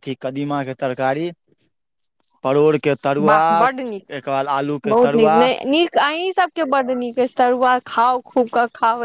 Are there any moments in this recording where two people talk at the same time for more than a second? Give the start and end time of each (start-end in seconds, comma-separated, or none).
none